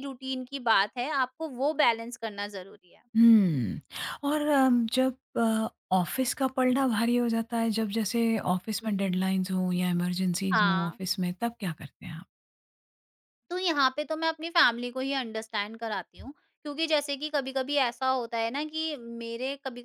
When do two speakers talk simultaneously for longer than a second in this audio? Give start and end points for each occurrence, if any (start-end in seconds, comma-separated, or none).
none